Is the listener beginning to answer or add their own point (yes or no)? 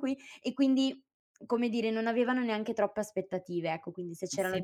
yes